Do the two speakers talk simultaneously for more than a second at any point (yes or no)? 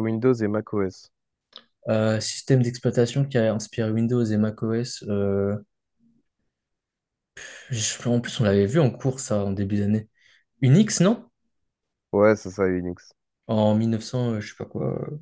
no